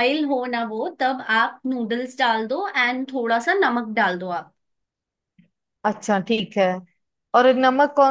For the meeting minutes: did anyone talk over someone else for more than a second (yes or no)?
no